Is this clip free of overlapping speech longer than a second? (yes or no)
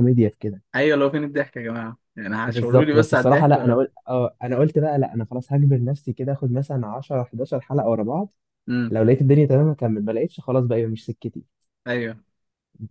no